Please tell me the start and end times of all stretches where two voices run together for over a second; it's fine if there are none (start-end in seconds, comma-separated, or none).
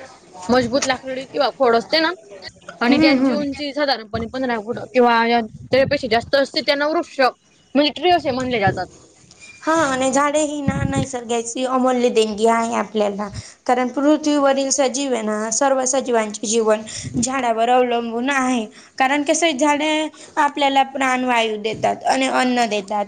none